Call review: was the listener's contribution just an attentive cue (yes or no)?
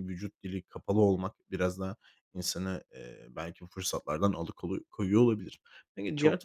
no